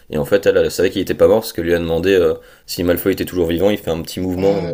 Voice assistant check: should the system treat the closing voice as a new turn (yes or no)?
yes